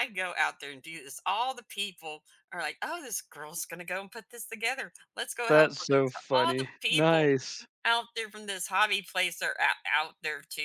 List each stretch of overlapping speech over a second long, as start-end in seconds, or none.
5.5-7.3